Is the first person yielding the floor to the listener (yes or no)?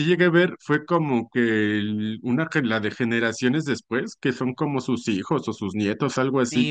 yes